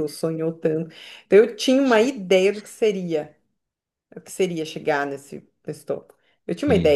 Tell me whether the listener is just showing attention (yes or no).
yes